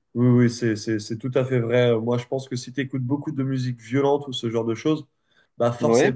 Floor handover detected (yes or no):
no